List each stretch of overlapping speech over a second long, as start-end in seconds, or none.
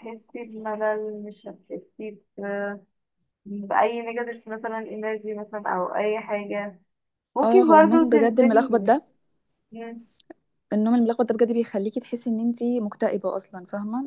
7.4-8.9